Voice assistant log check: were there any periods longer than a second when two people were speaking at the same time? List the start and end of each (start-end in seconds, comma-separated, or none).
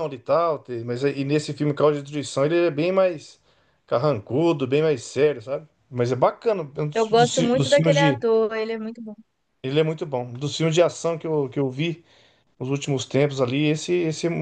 6.9-8.2